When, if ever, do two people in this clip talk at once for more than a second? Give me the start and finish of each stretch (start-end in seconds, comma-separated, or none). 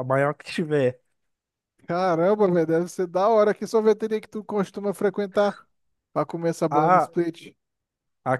none